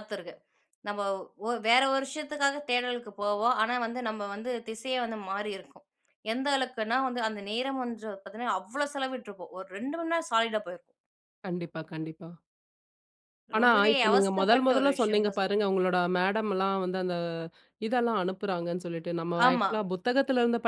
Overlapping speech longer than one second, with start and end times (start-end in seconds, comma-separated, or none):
13.6-15.6